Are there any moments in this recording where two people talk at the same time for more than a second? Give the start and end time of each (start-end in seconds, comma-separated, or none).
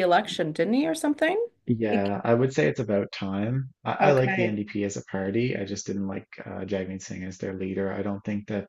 none